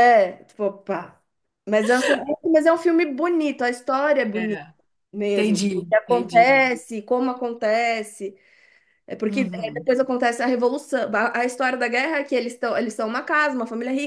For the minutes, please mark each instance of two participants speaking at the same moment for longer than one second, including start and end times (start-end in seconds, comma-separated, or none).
5.3-6.6